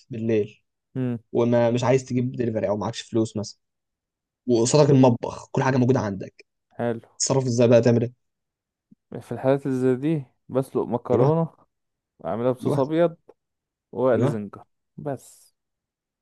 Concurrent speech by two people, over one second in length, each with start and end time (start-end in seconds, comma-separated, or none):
none